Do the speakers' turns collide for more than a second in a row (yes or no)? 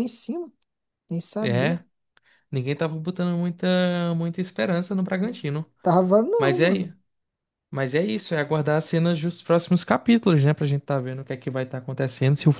no